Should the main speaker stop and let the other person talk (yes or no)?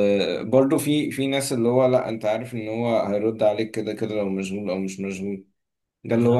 no